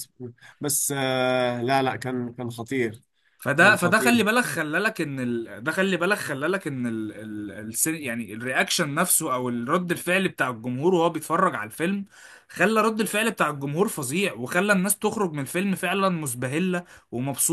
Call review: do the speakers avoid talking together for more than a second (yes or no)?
yes